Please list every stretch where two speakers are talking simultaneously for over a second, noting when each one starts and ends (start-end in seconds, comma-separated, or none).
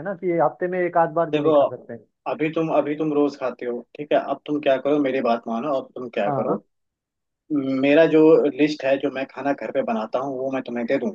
none